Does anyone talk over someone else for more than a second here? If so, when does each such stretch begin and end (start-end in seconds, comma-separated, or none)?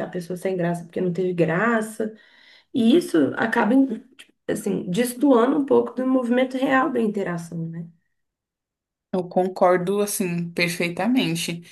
none